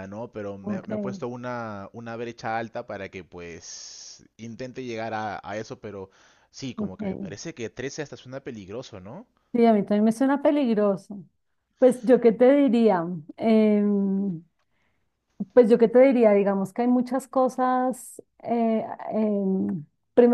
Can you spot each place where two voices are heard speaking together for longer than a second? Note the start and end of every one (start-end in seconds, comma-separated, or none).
none